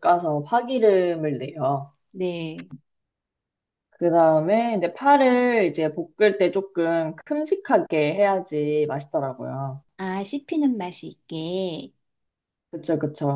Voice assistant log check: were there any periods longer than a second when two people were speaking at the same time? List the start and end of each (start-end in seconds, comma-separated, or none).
none